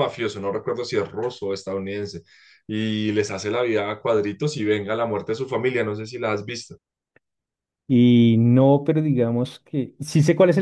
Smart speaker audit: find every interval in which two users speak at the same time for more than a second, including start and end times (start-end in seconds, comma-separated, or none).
none